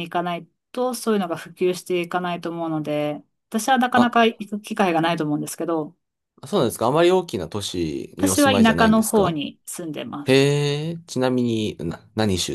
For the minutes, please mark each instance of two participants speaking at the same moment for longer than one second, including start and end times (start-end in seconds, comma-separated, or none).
8.2-9.4